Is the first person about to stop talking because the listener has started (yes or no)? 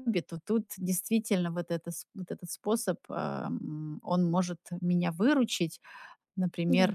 no